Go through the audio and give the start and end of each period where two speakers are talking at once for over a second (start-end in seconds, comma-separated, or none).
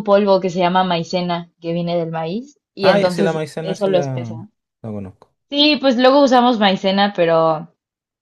2.8-4.3